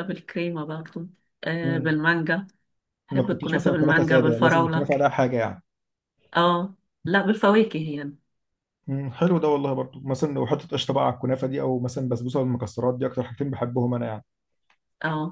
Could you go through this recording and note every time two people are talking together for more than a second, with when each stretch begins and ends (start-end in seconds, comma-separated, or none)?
3.1-4.9